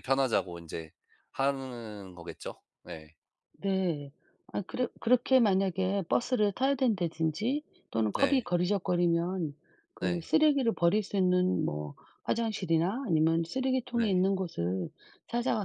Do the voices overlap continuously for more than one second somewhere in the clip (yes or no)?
no